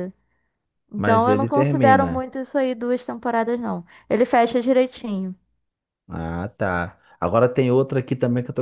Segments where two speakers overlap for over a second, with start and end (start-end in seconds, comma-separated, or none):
0.9-2.3